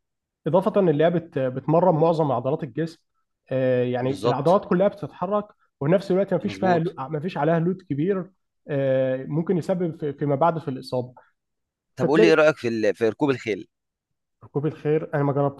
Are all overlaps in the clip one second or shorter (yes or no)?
yes